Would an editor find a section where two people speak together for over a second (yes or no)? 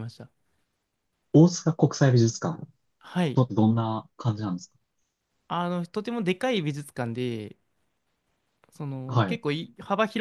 no